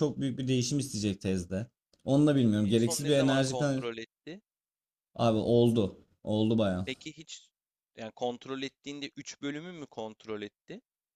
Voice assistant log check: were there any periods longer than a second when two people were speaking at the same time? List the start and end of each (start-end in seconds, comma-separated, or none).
2.2-3.8